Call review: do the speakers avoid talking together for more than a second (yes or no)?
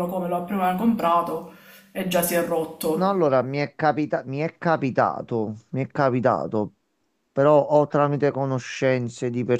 yes